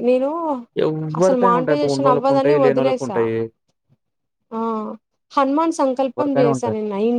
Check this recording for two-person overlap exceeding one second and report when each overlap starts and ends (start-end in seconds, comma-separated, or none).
1.2-3.2